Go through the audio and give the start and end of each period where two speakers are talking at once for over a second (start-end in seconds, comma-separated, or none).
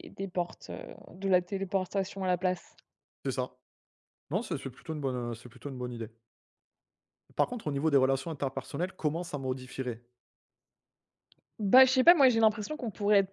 none